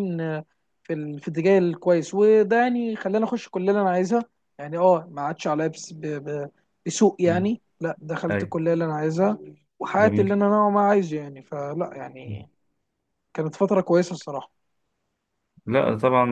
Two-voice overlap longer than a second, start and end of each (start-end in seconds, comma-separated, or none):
none